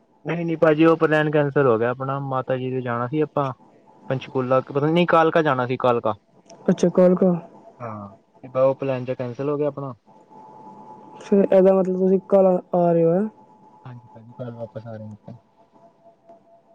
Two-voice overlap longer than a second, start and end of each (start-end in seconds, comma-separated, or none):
none